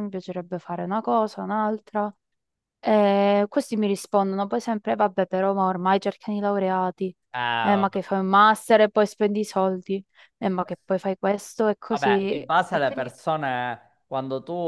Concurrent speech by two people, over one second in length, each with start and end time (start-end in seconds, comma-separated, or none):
11.9-13.1